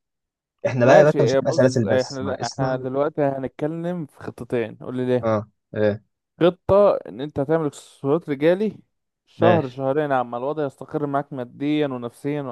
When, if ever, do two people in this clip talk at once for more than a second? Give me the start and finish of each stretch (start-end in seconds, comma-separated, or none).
0.8-2.9